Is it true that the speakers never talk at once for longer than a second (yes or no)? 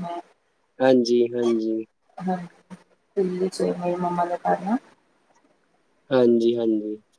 yes